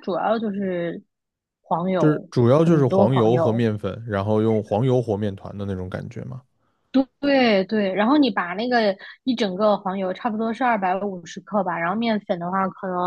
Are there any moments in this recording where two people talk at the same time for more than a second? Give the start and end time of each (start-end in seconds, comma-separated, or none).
2.0-3.7